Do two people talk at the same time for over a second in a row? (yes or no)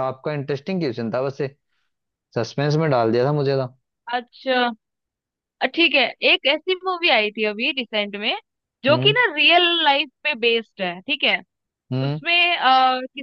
no